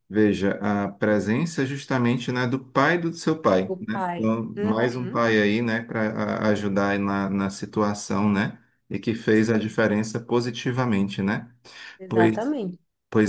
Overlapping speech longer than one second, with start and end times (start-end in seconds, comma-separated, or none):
3.7-5.3